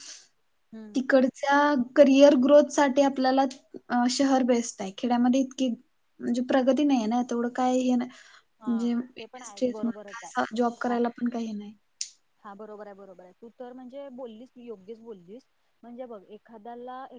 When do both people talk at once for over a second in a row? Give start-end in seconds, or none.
8.7-10.9